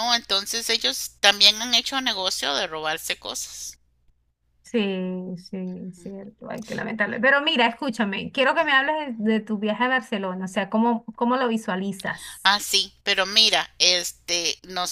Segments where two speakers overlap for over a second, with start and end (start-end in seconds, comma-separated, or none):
none